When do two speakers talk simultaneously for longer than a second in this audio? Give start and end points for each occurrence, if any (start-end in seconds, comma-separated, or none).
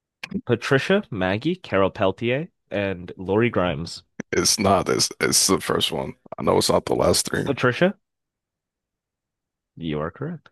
none